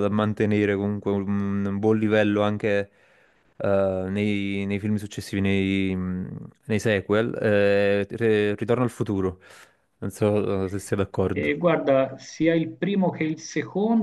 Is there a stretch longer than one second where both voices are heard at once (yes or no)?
no